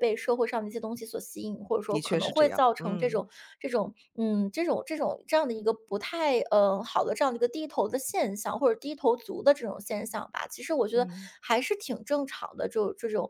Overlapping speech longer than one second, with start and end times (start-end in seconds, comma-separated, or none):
1.9-3.3